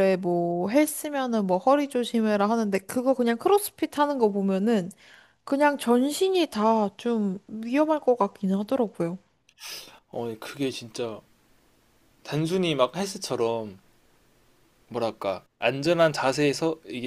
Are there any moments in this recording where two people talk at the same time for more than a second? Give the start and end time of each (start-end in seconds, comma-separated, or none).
none